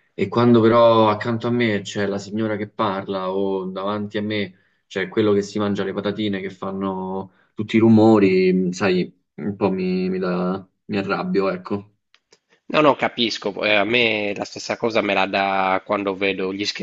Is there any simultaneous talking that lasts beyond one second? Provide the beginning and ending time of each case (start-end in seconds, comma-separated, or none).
none